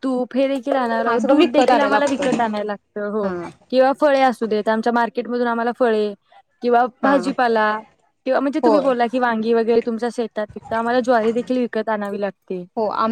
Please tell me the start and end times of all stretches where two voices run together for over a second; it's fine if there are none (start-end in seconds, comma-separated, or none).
1.1-2.4